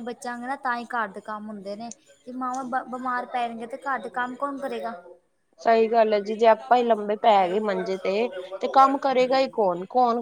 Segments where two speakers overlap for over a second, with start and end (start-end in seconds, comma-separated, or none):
7.4-9.5